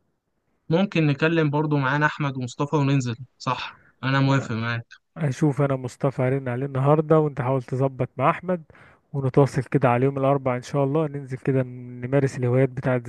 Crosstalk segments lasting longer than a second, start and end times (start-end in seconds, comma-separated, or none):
none